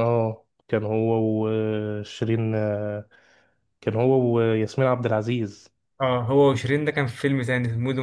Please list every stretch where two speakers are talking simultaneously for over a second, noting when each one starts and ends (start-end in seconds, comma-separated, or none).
none